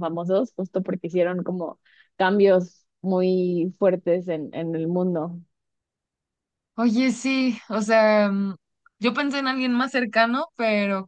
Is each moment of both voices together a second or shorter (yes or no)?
yes